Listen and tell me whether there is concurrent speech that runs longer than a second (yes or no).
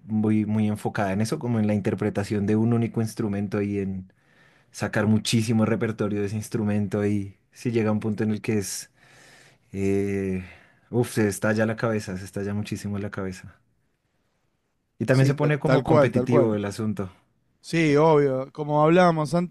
yes